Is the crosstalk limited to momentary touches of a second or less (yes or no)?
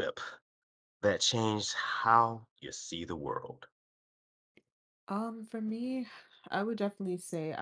yes